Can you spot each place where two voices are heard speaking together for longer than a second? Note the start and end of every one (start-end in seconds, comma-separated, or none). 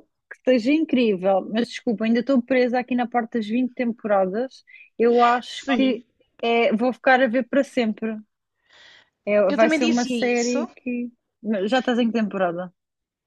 9.5-10.7